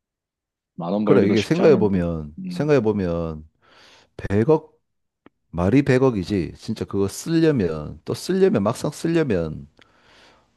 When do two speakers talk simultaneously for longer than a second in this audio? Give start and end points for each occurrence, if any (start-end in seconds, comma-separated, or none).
1.0-2.7